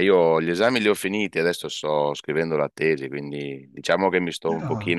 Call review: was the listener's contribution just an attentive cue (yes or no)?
yes